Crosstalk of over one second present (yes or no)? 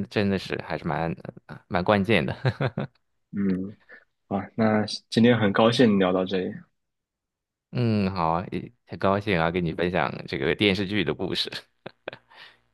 no